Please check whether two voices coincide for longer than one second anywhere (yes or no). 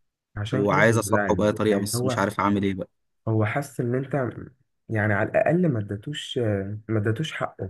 yes